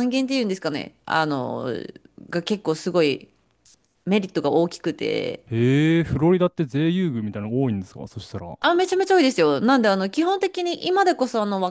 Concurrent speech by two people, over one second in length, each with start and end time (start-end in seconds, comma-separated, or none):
none